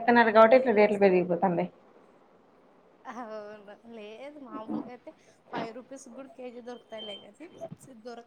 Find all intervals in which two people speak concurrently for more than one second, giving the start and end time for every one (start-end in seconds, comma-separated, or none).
none